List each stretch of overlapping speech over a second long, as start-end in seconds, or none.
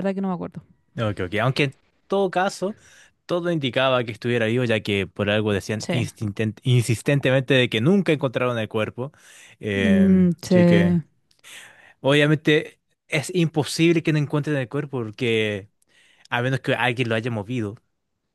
9.7-11.0